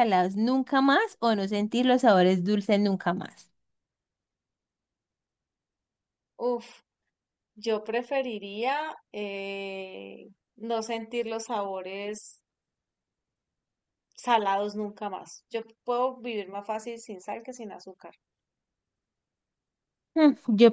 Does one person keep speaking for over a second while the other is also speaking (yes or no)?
no